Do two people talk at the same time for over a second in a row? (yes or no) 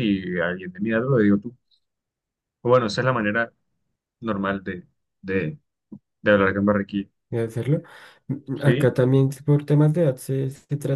no